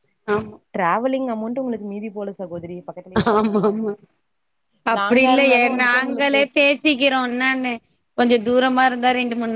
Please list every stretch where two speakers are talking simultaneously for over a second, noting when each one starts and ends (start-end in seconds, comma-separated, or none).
5.0-6.4